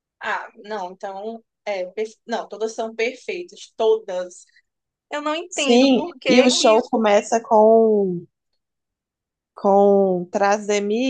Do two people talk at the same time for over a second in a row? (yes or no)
yes